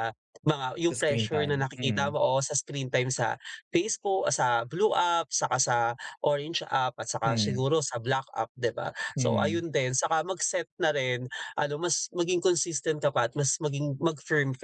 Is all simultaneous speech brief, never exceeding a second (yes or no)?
no